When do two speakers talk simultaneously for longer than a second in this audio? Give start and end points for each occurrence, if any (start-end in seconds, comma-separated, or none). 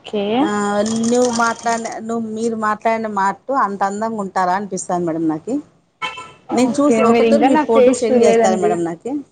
6.7-8.7